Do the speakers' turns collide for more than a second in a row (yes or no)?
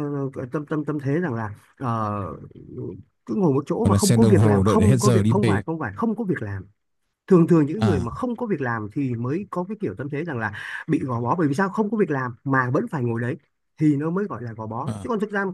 yes